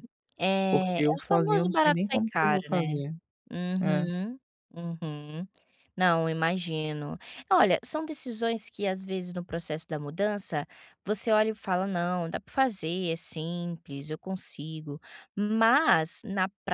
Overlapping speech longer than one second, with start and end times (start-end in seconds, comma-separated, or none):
0.7-3.0